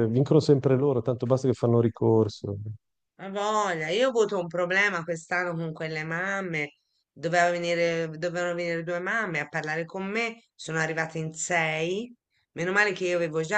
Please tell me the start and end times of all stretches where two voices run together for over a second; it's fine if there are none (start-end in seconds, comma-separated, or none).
none